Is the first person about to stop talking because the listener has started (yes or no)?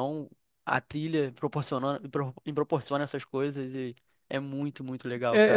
yes